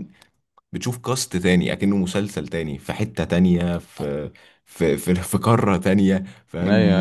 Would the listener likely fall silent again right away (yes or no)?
no